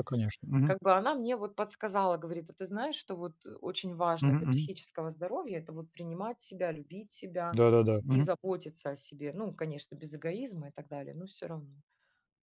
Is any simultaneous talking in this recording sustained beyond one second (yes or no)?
no